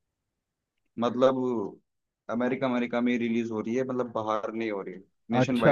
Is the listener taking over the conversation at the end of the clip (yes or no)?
yes